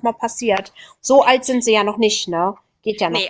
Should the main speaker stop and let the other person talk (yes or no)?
yes